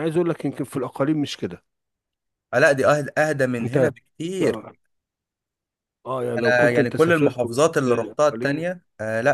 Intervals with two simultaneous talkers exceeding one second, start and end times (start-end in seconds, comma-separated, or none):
6.4-8.7